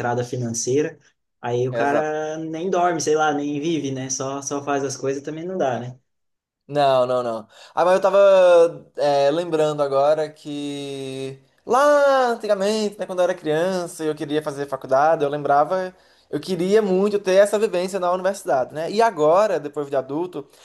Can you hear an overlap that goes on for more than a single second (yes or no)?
no